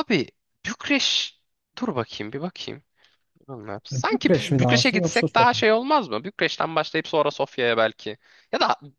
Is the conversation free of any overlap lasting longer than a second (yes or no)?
no